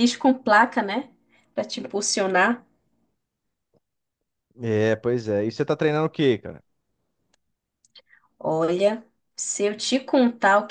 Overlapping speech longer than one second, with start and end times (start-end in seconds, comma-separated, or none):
none